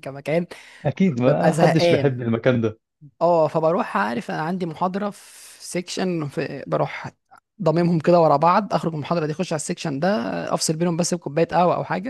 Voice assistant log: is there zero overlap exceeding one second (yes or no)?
no